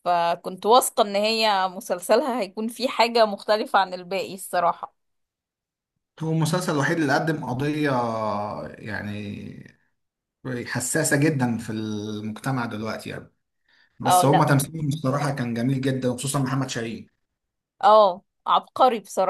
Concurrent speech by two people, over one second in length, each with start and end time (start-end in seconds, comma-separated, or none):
none